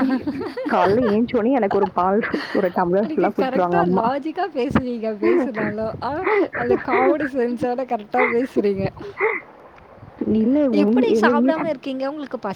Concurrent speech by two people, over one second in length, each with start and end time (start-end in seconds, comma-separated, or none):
none